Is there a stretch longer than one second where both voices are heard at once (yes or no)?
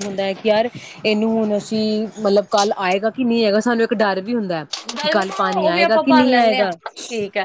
yes